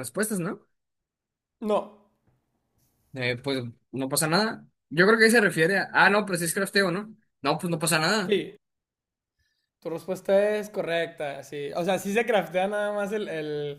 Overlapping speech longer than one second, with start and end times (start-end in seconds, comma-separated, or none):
none